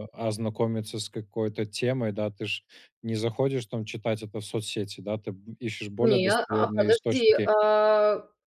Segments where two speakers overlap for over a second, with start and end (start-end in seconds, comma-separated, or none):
6.0-7.5